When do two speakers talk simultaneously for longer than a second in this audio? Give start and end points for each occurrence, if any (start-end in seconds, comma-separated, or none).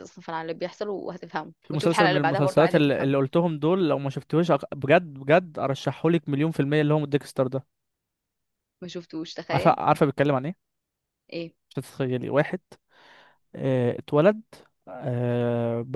1.6-3.1